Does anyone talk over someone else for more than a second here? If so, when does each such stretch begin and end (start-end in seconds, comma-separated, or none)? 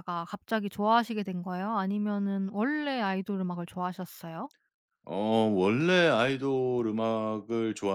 none